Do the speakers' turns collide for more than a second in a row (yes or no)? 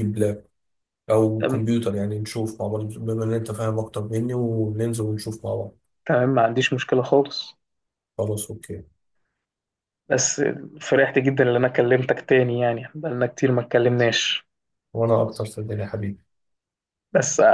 no